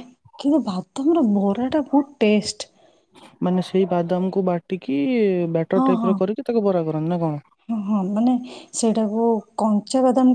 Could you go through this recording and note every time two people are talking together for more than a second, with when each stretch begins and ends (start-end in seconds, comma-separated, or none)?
none